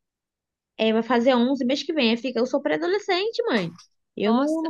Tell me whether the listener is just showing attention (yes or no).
yes